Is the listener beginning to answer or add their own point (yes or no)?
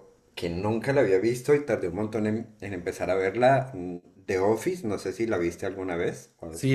yes